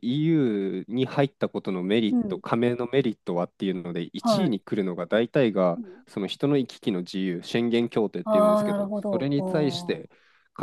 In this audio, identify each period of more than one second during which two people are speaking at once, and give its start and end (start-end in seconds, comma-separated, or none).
8.2-10.1